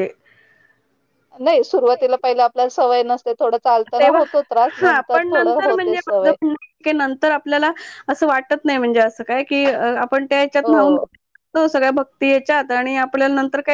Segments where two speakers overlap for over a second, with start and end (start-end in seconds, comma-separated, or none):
4.8-6.3